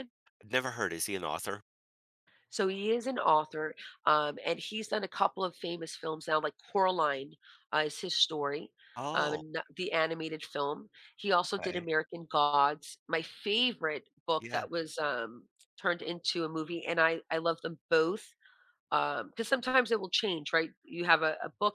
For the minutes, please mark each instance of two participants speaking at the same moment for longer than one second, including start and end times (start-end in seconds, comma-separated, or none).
none